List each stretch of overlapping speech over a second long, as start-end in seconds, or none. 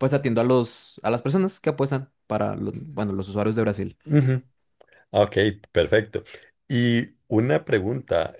none